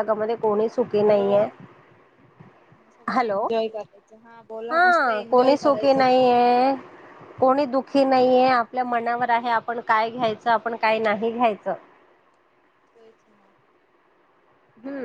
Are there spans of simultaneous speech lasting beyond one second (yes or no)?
yes